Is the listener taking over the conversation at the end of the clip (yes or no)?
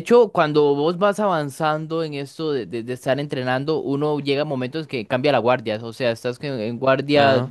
no